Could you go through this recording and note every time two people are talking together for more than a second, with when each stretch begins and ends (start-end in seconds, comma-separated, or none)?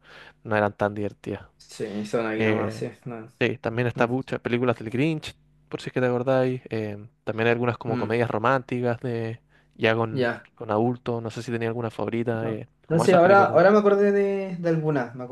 12.4-13.7